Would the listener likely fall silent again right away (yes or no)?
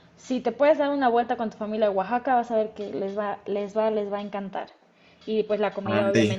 yes